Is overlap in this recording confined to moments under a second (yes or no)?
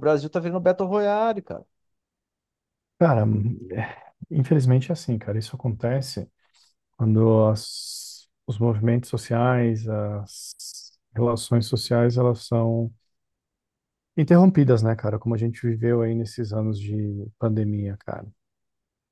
yes